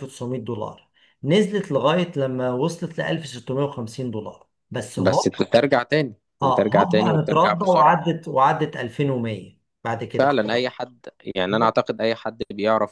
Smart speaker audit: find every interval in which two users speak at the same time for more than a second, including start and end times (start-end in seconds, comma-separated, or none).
6.4-8.1